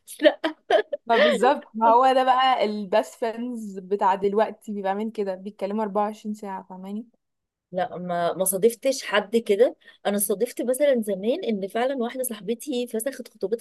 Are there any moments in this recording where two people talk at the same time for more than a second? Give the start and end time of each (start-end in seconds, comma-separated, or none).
none